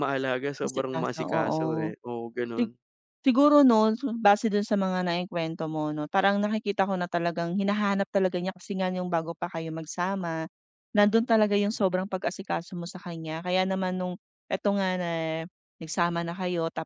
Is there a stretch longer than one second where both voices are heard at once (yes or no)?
yes